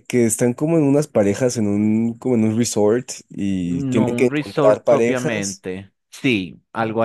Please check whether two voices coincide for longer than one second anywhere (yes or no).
yes